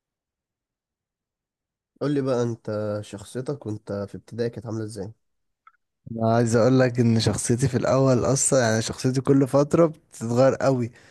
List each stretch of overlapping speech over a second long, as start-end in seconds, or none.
none